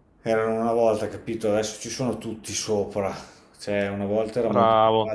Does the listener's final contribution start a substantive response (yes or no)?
no